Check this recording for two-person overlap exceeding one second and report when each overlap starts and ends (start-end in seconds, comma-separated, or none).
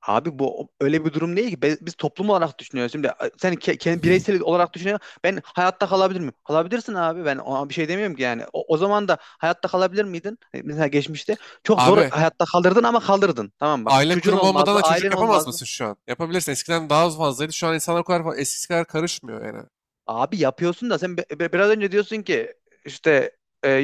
13.8-15.6